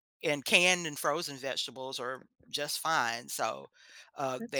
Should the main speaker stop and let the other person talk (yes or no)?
no